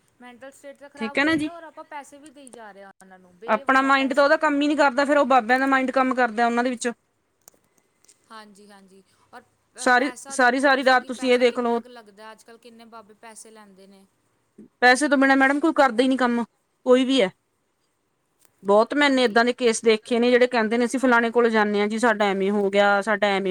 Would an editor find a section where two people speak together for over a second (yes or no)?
yes